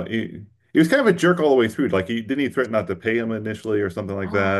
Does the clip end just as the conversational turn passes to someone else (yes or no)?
yes